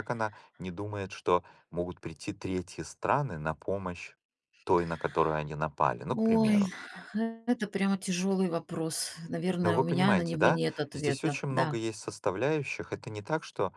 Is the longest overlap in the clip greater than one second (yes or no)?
yes